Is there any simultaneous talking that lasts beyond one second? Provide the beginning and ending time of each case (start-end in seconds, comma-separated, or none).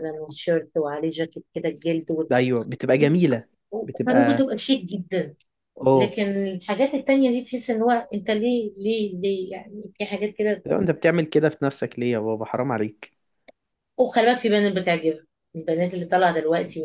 none